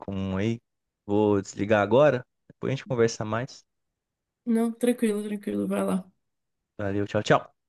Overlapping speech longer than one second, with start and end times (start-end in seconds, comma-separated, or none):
none